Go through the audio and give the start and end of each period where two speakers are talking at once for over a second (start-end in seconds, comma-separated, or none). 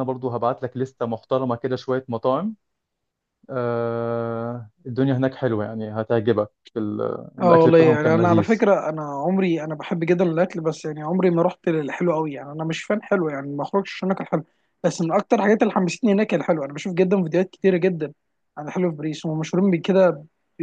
7.4-8.7